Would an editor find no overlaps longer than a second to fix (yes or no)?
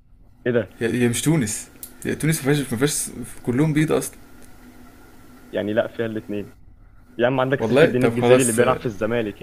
no